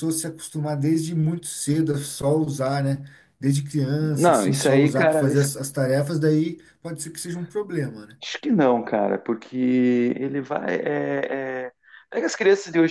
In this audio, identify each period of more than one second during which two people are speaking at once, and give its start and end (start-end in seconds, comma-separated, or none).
4.1-5.5